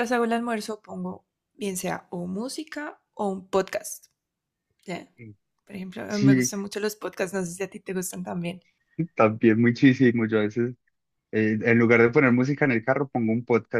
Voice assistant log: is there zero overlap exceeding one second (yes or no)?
yes